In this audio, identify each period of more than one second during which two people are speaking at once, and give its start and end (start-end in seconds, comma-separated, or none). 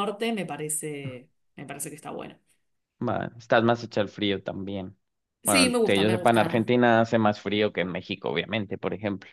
5.5-6.7